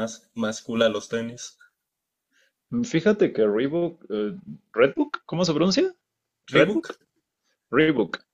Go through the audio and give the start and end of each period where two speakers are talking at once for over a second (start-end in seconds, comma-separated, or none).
none